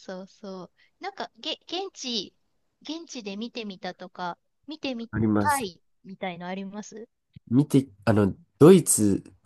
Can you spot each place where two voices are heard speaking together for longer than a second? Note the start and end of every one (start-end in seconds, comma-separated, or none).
none